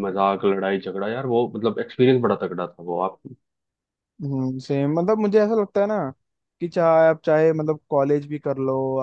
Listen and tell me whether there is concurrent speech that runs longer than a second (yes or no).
no